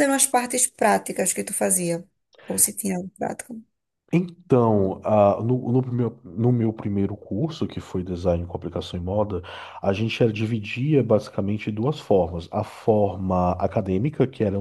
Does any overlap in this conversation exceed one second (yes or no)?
no